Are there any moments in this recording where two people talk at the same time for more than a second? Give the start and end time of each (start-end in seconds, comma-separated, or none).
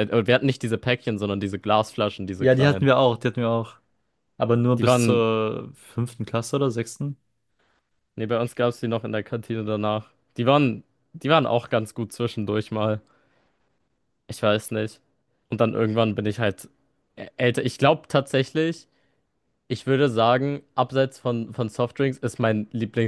none